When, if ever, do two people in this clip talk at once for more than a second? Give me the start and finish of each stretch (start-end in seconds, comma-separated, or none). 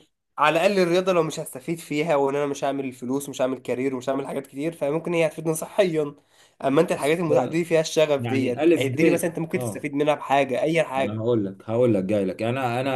8.2-9.9